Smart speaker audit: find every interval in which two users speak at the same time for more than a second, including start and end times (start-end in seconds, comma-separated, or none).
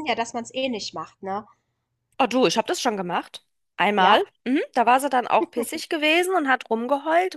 none